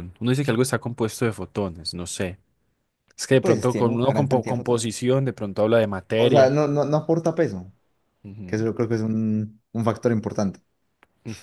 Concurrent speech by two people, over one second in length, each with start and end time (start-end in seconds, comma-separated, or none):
3.4-4.9